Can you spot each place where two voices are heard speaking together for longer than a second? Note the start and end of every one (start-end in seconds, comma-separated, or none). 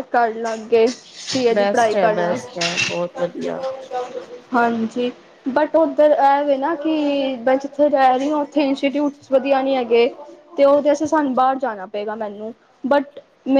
none